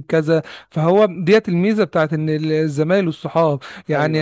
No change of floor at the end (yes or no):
yes